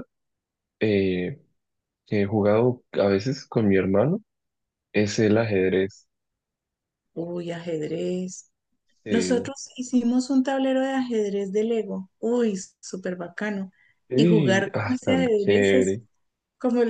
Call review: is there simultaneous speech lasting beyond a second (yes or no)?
yes